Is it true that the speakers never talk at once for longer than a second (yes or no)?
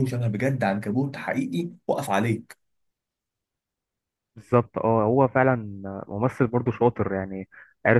yes